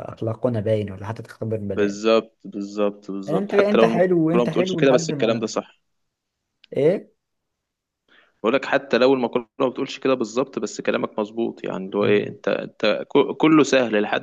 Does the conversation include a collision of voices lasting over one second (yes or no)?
yes